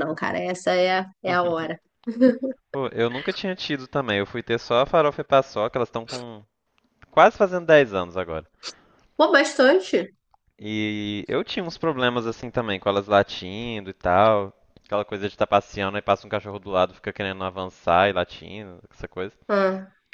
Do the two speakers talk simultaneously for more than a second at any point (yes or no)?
no